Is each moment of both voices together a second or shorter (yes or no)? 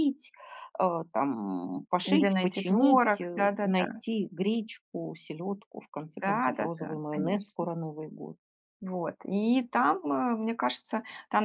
no